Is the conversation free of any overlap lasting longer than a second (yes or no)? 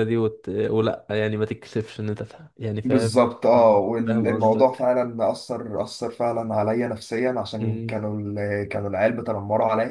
no